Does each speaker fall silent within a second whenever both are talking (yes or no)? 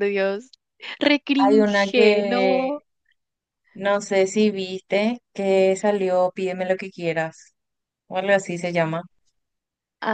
no